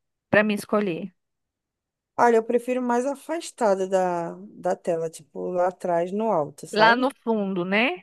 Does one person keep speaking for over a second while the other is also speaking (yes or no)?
no